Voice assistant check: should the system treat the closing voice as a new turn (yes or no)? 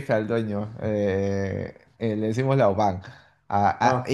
no